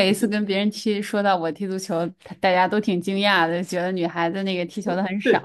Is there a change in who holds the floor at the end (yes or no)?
yes